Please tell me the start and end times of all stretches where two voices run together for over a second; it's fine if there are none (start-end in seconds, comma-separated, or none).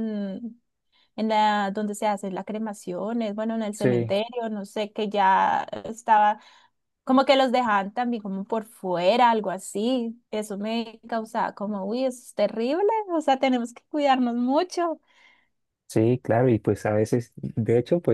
none